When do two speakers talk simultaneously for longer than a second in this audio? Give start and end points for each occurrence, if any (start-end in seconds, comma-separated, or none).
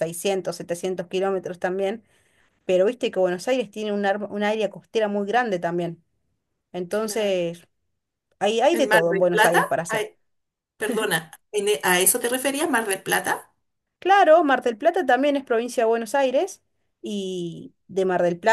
8.7-10.1